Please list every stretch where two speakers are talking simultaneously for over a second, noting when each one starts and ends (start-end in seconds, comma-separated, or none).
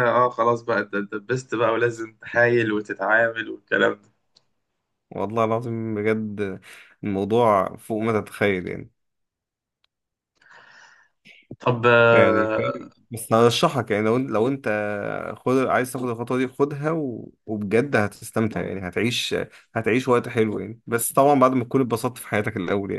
none